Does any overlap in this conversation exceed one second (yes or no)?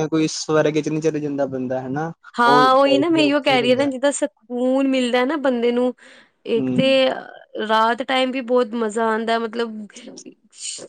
yes